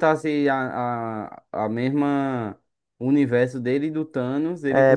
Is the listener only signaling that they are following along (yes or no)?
no